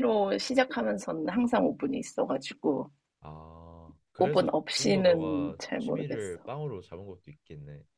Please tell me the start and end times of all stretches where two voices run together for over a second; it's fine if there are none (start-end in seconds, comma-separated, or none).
4.2-6.5